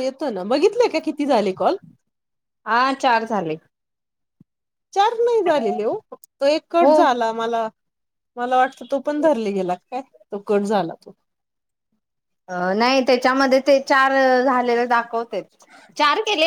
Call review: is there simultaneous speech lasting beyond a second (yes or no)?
no